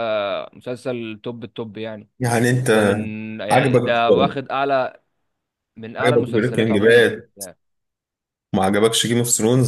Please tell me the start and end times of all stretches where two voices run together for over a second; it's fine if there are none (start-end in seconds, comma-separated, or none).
6.0-7.3